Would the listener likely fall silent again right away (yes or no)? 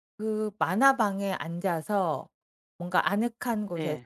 yes